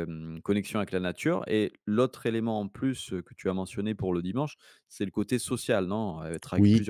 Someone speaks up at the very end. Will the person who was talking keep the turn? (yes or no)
no